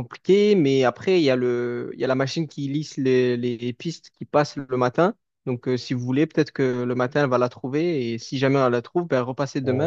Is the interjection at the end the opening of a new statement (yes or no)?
yes